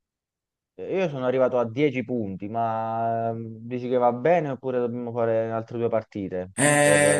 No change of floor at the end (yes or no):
no